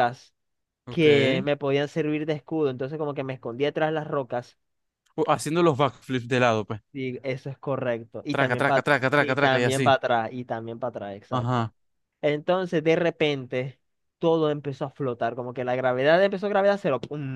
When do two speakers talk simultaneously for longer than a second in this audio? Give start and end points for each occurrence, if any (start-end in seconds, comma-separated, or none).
8.3-9.9